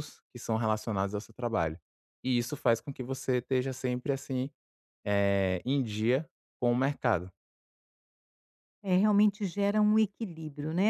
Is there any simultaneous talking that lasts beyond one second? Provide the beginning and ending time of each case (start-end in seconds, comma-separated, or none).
none